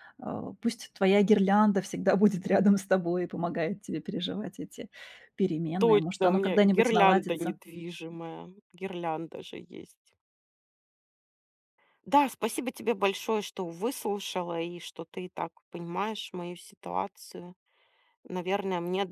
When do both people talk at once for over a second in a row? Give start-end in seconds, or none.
5.8-7.6